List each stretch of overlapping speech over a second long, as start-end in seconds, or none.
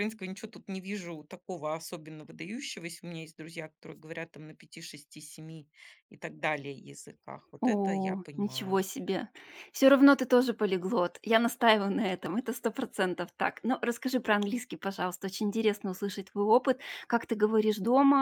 7.6-8.8